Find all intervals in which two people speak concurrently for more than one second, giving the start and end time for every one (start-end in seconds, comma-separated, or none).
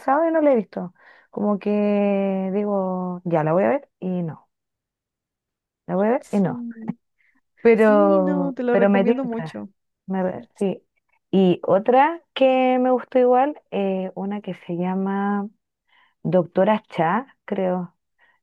7.7-9.5